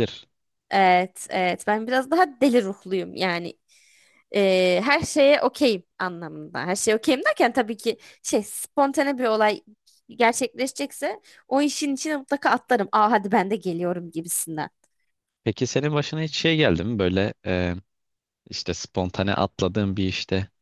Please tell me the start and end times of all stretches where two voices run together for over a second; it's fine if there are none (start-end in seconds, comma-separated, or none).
none